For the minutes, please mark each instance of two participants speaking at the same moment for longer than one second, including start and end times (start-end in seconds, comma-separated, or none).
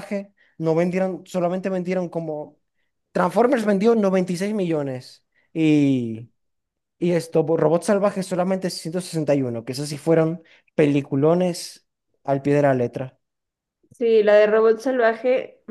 none